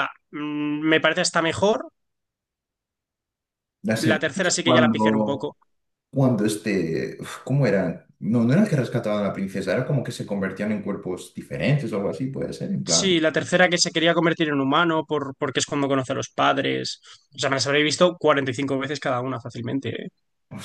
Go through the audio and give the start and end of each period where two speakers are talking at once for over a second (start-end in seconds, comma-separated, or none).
4.1-5.5